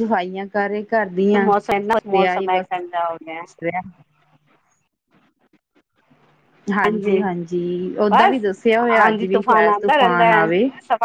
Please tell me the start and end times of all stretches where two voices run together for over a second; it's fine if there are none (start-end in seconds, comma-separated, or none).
9.0-10.4